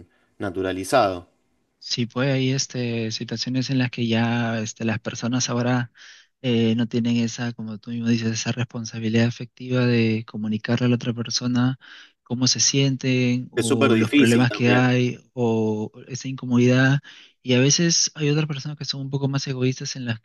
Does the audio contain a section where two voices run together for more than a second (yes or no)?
yes